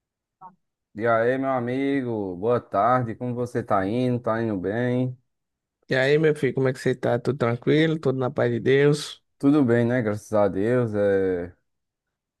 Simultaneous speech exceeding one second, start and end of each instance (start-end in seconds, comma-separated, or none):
none